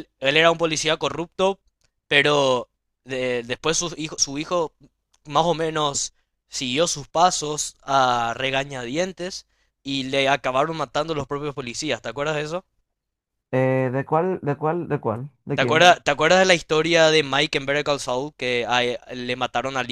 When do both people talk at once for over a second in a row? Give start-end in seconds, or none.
none